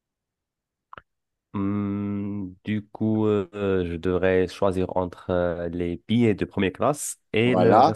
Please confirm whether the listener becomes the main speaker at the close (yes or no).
yes